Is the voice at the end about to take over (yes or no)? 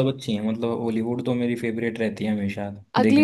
yes